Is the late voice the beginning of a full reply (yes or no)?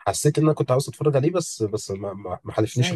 yes